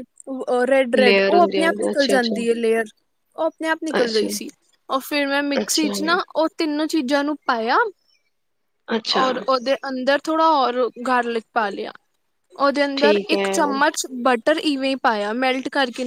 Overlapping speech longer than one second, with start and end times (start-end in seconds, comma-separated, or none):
1.0-2.4